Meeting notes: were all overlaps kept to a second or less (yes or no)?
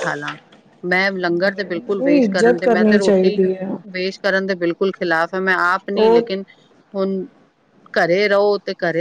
no